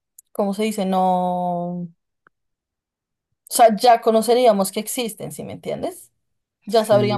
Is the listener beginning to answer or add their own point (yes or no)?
no